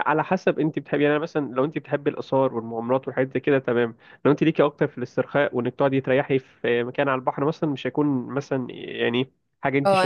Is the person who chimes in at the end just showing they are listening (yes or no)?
no